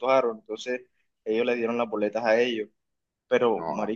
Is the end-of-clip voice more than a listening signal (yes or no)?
no